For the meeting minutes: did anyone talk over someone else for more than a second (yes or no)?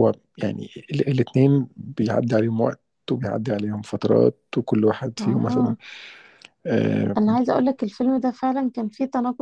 no